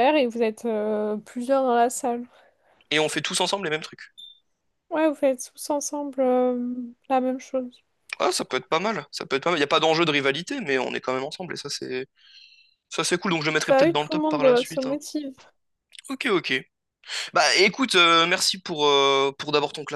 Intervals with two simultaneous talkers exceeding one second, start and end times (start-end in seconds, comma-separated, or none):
13.7-15.0